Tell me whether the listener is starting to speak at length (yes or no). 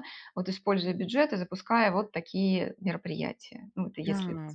yes